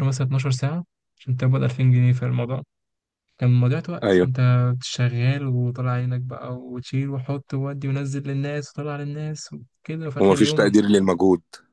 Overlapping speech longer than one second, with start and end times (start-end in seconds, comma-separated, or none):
none